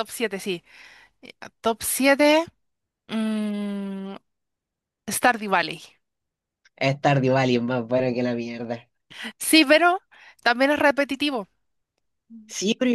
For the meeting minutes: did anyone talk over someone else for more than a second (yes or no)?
no